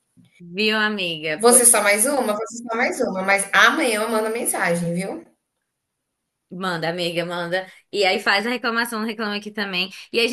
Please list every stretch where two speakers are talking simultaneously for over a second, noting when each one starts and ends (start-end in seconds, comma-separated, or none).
none